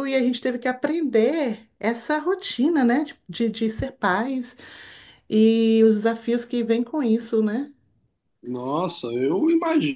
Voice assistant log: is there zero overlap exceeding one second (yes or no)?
yes